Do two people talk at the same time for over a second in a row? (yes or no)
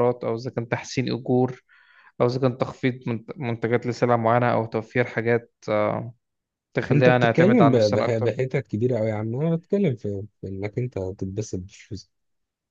yes